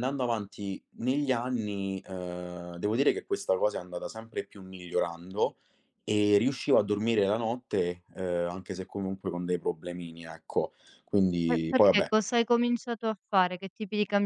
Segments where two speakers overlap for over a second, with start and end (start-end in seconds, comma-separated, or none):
none